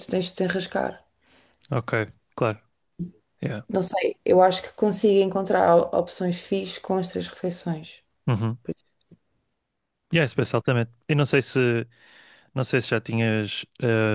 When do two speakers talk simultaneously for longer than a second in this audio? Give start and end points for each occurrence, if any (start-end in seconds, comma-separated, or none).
none